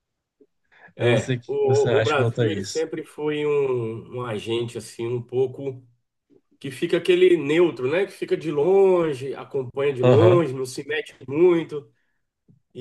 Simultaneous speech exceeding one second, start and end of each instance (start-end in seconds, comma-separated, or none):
1.0-2.9